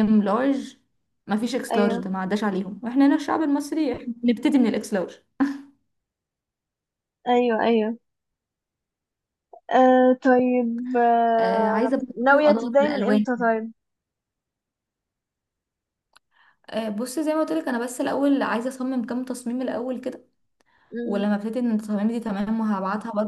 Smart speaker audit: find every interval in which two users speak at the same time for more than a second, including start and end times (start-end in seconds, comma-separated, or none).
11.4-13.3